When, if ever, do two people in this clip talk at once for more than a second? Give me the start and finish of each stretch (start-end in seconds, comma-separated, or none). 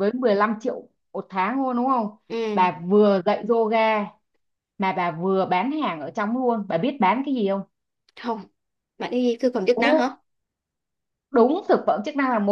none